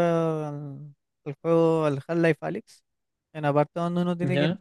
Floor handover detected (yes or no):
no